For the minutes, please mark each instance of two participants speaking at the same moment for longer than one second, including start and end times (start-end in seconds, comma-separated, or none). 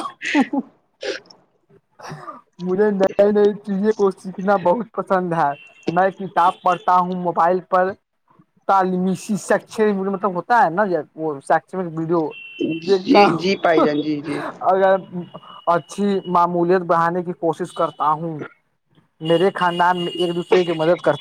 none